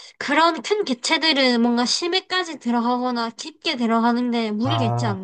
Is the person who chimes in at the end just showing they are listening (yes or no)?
no